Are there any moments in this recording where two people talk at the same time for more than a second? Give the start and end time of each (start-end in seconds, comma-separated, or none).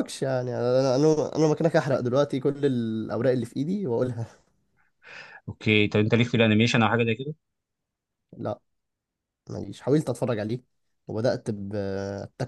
none